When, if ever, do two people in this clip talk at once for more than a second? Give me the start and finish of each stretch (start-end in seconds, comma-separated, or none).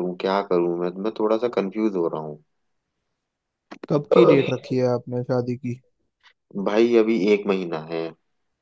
none